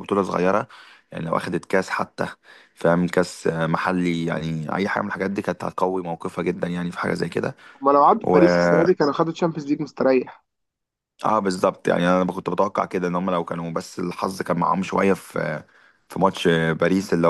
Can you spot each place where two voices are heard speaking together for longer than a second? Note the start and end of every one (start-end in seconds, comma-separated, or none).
none